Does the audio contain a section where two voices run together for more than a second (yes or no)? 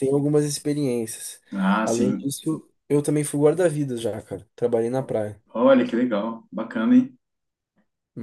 no